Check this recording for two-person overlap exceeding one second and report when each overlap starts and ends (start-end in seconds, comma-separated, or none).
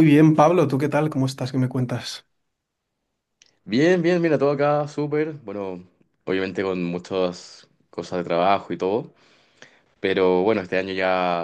none